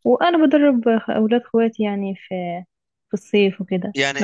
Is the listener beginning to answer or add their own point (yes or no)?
yes